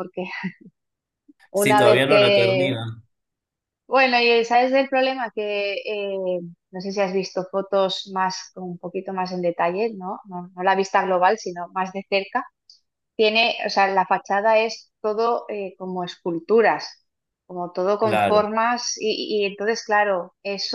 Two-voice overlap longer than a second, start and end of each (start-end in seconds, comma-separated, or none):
1.5-2.8